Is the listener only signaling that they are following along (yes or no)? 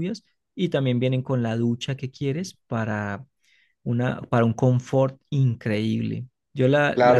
no